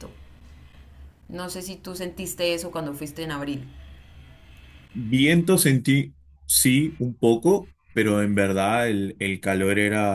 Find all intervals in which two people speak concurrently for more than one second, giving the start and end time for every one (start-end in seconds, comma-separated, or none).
none